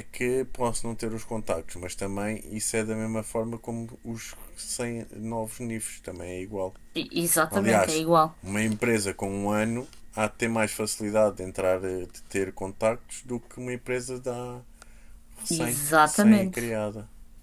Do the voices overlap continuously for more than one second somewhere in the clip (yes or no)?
yes